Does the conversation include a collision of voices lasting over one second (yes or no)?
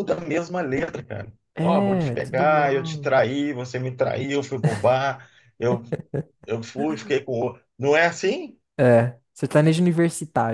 yes